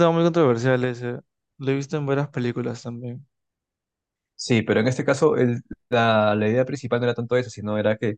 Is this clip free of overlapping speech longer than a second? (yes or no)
yes